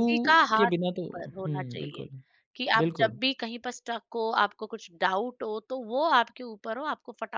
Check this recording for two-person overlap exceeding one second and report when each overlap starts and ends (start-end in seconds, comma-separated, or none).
0.6-2.0